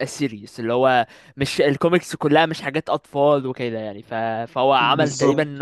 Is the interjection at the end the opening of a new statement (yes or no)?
no